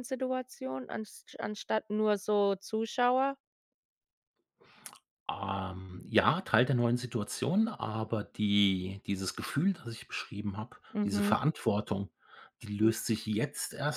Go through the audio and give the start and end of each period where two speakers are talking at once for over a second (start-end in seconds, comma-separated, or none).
none